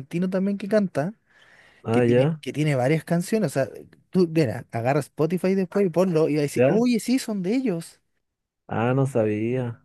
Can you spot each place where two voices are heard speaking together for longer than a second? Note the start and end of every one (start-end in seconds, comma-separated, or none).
none